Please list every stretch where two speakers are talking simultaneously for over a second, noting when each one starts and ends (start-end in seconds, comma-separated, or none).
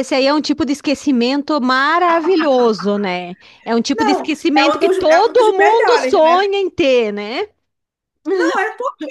3.9-6.5